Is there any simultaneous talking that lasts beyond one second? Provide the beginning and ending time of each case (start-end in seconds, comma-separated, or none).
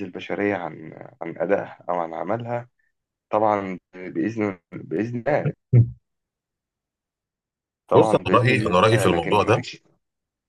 7.9-9.6